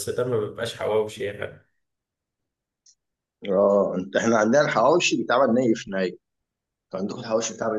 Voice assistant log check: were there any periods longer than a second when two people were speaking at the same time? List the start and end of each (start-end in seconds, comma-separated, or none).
none